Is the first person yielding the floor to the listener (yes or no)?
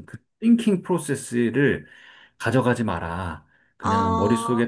no